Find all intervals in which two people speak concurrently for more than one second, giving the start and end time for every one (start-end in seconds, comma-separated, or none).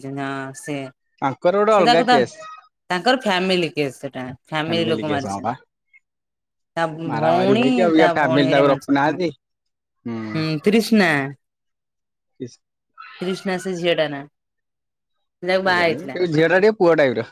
7.1-9.2